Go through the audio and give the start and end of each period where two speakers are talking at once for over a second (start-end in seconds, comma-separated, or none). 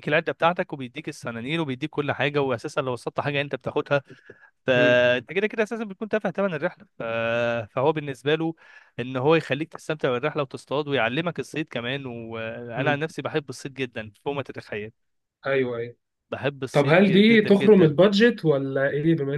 16.7-17.9